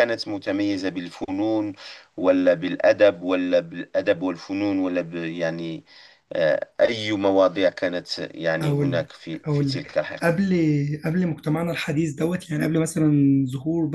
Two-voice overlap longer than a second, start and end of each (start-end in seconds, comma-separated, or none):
8.6-10.4